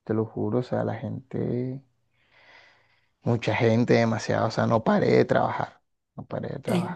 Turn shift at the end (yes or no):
yes